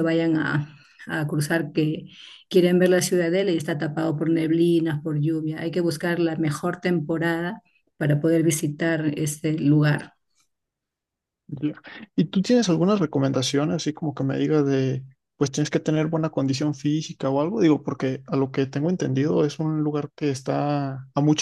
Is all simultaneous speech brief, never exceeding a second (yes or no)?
yes